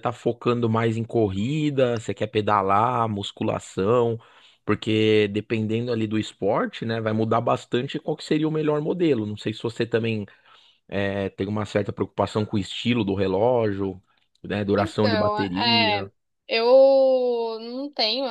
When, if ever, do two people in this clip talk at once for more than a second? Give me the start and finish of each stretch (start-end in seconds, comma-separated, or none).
14.8-16.1